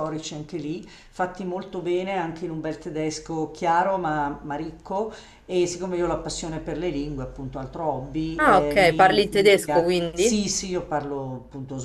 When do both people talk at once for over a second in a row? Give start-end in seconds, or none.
8.3-10.4